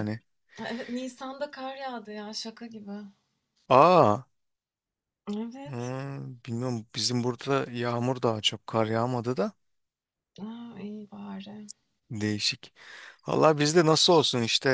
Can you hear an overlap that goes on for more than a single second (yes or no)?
no